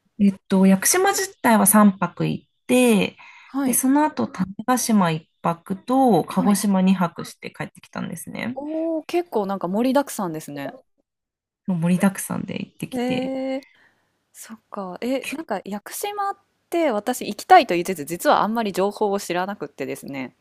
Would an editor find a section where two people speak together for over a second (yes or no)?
no